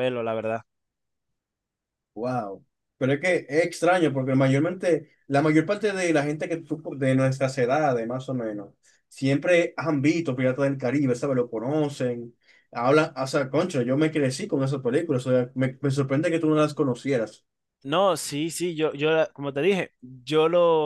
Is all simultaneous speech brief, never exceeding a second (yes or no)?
yes